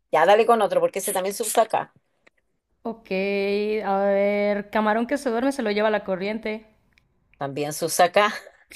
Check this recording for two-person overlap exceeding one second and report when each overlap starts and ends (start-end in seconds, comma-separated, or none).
none